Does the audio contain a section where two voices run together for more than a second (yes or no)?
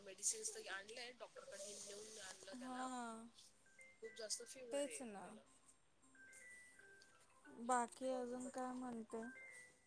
yes